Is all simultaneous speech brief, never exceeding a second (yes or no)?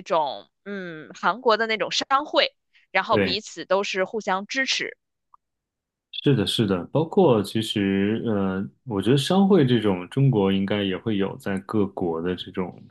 yes